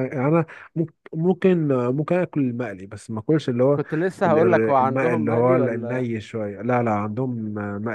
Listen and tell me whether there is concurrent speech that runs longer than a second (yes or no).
yes